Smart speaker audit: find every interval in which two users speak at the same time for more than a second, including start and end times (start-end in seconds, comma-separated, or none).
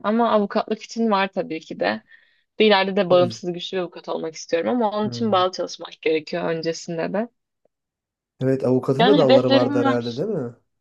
9.0-10.2